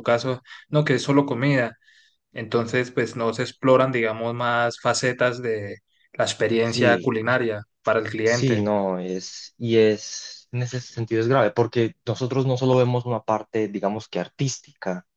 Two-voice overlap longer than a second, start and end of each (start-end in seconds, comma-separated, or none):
none